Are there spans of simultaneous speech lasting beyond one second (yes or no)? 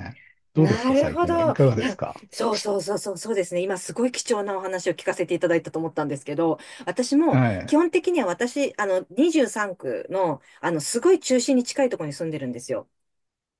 yes